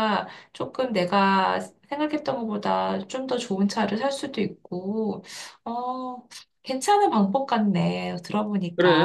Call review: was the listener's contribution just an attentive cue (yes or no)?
no